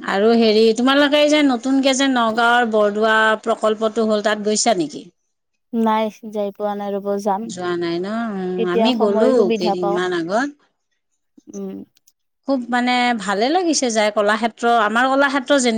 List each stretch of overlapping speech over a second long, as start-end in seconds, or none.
7.5-10.1